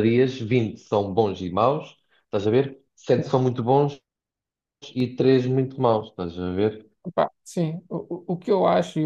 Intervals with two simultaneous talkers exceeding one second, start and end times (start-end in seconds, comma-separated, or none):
none